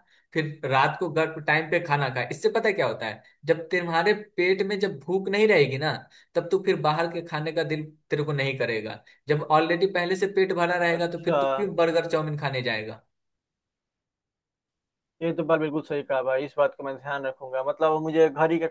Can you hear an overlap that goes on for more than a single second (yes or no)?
no